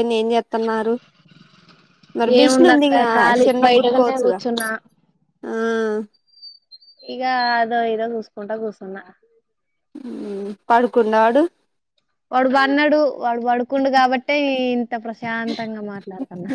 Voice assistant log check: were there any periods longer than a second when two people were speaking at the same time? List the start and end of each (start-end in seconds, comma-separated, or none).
2.4-4.4